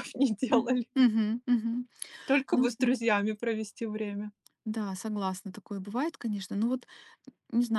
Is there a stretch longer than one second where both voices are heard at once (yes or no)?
no